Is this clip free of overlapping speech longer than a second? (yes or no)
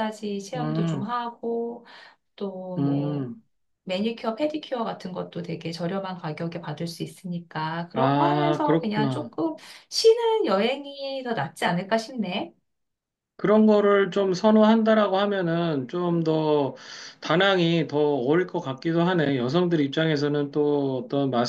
no